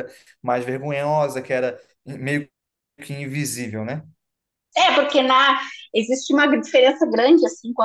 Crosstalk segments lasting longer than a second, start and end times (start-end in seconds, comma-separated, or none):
none